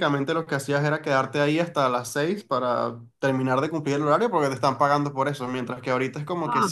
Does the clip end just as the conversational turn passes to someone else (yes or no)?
no